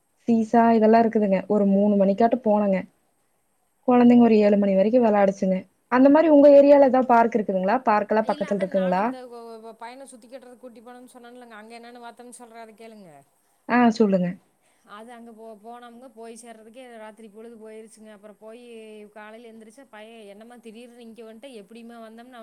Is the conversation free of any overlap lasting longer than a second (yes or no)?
yes